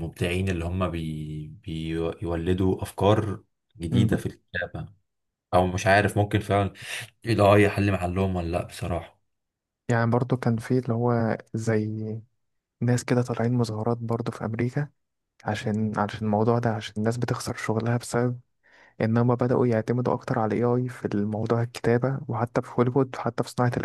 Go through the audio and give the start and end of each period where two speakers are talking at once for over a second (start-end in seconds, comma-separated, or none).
none